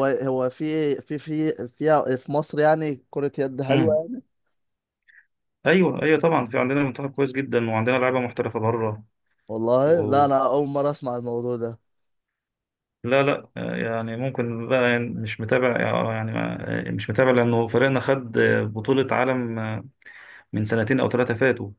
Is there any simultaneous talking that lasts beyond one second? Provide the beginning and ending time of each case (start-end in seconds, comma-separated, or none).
none